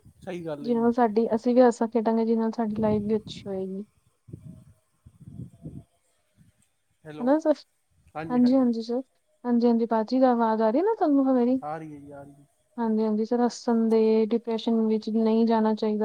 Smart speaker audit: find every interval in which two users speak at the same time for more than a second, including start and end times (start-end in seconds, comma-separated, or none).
none